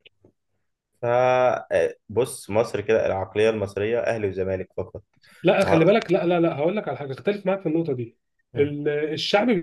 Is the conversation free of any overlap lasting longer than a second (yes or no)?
yes